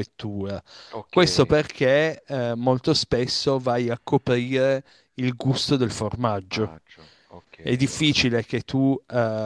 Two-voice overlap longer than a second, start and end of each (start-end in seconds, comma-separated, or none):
none